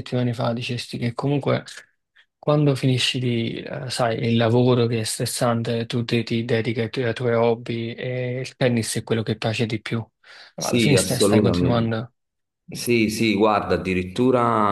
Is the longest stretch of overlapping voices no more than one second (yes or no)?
no